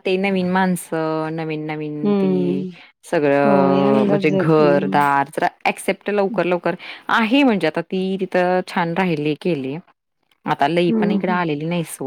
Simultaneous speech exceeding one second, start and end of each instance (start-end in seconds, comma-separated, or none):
3.5-4.8